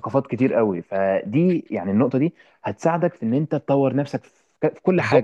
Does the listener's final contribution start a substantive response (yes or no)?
yes